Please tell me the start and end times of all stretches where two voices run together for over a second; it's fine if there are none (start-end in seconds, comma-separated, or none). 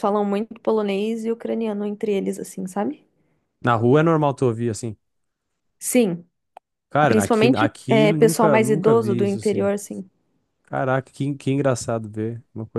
7.0-9.7